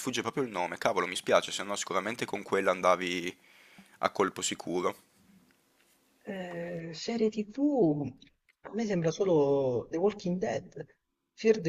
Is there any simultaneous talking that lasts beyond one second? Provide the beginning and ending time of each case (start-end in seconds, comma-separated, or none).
none